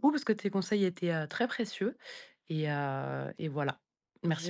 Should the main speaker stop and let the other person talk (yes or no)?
yes